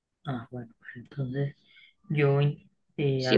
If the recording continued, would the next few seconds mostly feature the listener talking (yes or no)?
yes